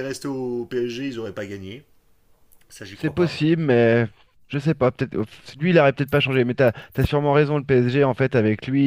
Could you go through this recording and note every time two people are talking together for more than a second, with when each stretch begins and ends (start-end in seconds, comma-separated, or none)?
none